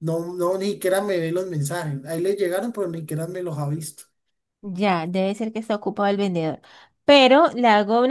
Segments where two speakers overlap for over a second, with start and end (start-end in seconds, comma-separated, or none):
none